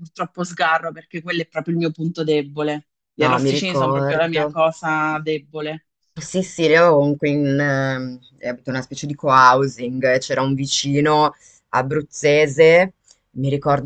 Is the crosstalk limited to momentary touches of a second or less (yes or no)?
no